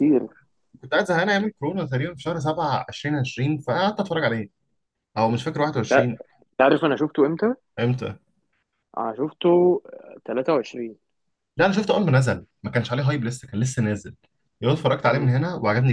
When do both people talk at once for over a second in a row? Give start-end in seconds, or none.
none